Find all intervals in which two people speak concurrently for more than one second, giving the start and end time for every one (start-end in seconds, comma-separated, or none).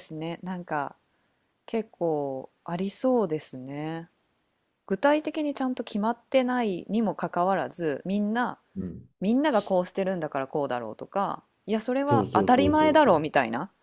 12.0-13.2